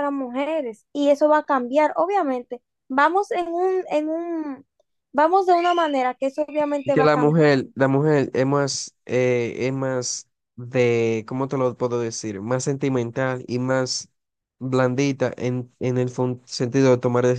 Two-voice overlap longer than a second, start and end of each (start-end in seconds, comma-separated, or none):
none